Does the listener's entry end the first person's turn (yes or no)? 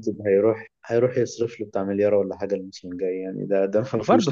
yes